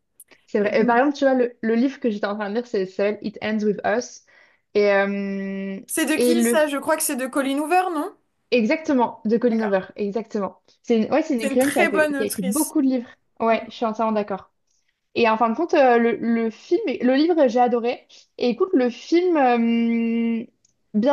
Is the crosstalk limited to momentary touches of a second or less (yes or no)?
no